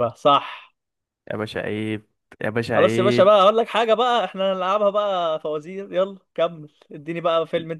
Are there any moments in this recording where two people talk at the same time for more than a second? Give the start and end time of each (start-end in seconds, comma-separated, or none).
none